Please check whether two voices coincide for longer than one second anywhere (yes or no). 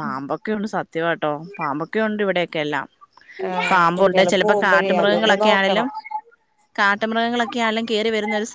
yes